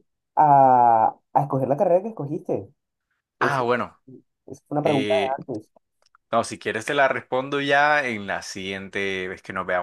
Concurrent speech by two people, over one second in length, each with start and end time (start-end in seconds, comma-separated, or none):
none